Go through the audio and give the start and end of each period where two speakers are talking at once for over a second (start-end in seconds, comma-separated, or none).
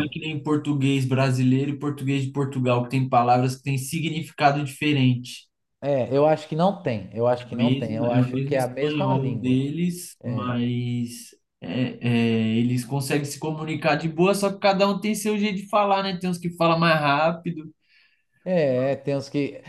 7.5-9.6